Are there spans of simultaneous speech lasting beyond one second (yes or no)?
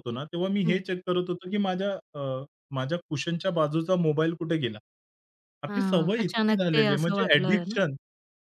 yes